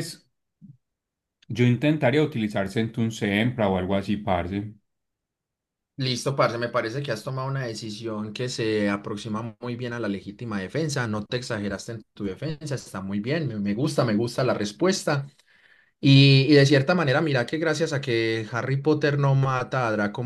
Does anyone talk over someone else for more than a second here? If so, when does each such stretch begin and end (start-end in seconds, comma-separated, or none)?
none